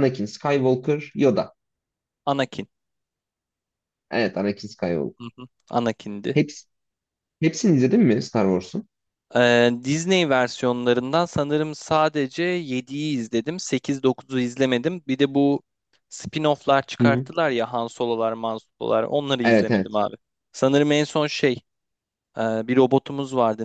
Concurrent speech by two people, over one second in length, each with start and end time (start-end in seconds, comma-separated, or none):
none